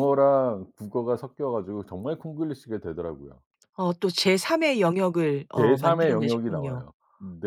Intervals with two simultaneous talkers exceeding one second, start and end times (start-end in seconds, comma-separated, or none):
5.5-6.9